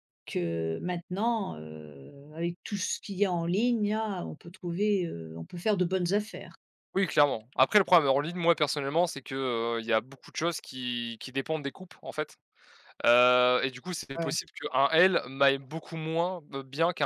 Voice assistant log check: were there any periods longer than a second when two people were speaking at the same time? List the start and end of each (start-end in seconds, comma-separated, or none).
none